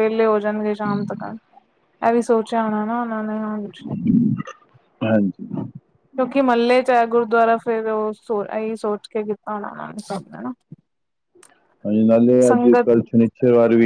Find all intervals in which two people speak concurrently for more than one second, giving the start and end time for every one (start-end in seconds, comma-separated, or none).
none